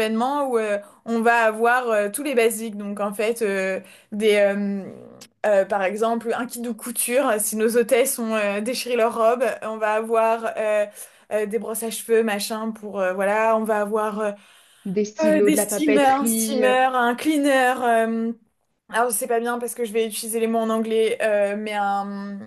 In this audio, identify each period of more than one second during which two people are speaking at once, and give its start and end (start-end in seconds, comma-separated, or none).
15.2-16.7